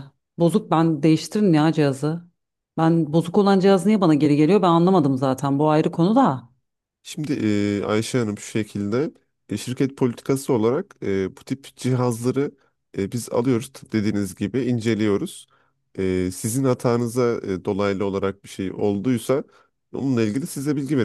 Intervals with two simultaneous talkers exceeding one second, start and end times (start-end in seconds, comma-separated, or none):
none